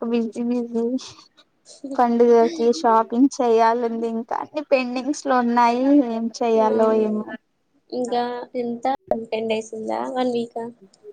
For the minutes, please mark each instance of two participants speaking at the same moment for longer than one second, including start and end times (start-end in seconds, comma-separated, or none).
none